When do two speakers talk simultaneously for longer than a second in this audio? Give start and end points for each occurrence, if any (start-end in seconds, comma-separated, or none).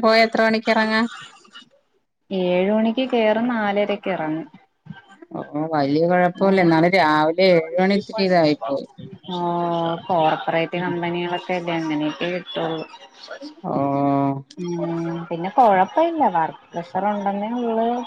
none